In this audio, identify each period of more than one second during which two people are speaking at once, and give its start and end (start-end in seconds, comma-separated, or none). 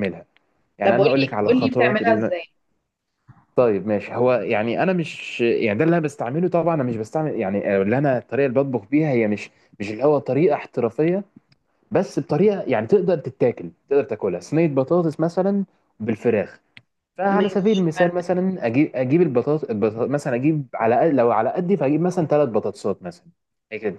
0.8-2.3